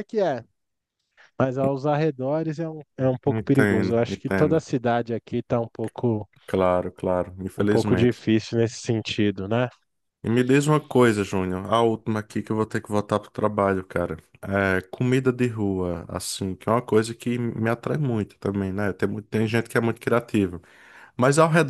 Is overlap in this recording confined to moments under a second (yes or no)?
no